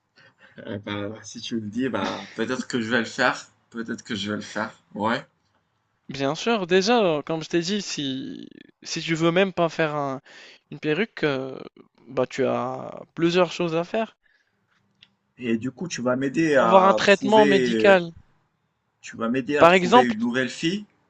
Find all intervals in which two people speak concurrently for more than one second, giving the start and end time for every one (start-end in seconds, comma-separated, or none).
16.6-18.0